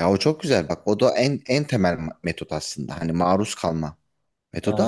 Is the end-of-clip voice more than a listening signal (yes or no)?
no